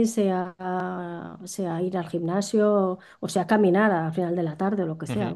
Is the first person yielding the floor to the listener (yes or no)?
yes